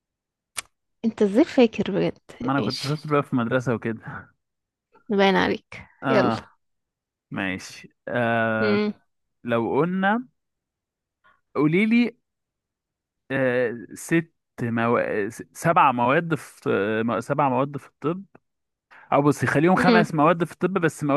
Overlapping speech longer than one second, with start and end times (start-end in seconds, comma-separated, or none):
none